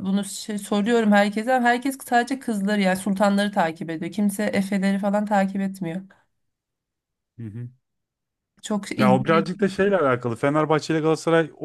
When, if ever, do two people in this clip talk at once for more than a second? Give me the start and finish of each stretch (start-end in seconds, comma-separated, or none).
none